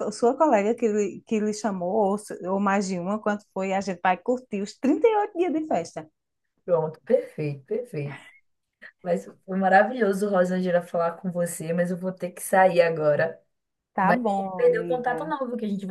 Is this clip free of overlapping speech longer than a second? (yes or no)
no